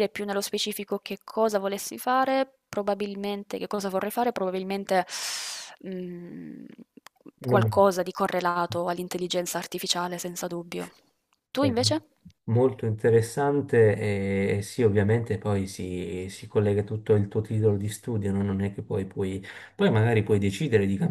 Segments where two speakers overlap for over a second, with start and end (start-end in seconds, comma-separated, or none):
none